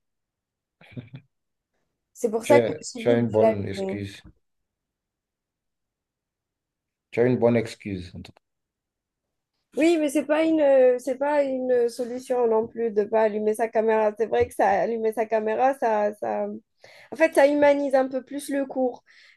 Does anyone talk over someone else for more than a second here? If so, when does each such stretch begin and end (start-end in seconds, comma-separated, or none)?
2.4-4.1